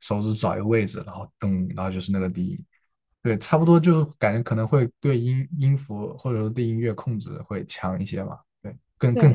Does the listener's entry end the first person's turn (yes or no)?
yes